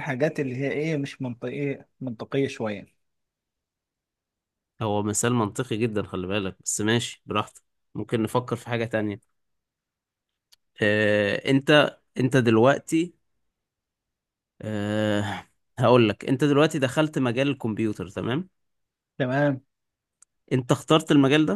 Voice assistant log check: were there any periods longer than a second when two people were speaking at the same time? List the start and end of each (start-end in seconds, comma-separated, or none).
none